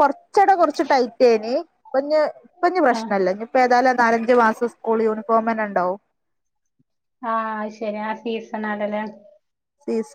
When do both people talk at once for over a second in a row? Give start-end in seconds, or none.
none